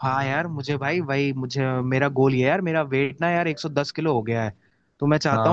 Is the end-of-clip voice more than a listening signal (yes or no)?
no